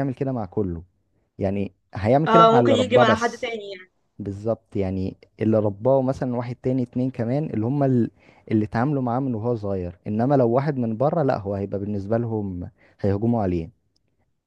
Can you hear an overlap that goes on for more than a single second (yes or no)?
yes